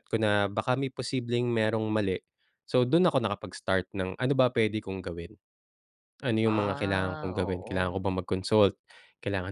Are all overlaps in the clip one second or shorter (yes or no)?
no